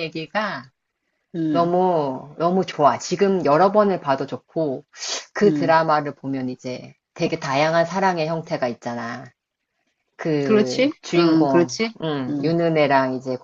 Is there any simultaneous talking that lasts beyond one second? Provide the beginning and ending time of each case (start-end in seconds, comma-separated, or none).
10.4-12.5